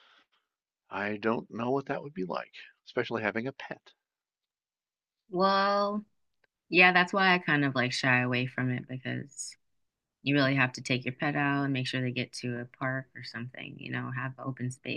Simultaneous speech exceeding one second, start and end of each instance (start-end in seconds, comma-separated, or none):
none